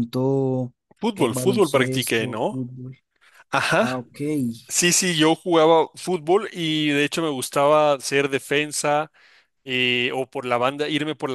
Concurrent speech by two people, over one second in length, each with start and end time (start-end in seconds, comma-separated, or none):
1.1-2.6